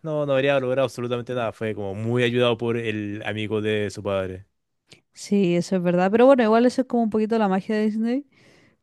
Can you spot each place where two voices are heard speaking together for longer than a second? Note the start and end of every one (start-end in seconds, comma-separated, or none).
none